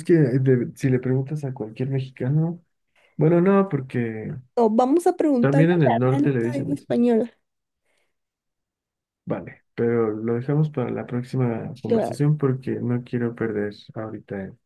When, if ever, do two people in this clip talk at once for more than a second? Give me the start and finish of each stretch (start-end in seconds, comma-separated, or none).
5.4-6.9